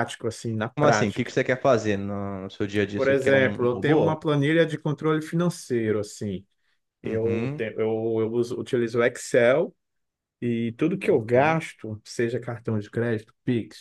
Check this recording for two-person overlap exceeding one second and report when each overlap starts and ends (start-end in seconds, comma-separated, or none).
3.0-4.2